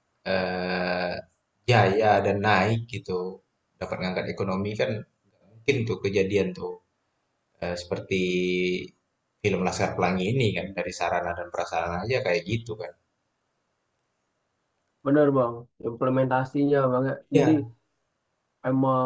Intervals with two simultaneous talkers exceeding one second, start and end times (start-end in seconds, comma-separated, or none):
none